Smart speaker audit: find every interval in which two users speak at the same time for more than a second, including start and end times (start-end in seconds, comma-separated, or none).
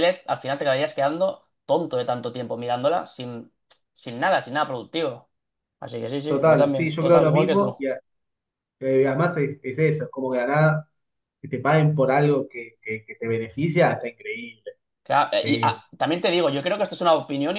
6.3-7.7